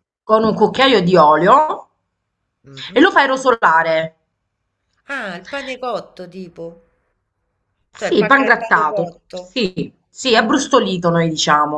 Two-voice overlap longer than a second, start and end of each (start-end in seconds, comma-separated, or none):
8.0-9.6